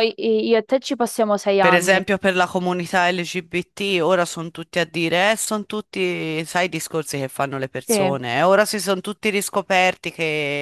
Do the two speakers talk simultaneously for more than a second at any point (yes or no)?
no